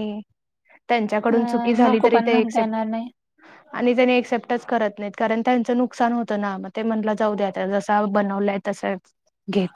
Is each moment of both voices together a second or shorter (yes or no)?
no